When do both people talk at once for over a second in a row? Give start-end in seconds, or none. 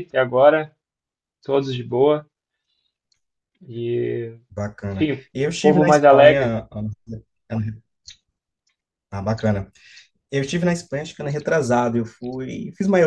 4.9-6.5